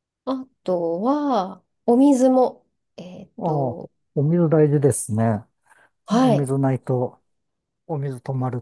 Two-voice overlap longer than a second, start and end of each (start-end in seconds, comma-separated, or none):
none